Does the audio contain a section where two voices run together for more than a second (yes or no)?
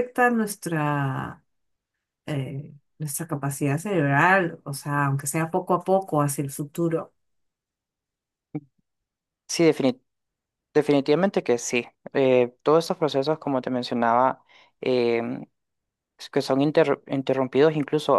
no